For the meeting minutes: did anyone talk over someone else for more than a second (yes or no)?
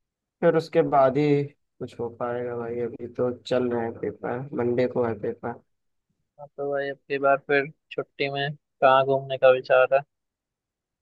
no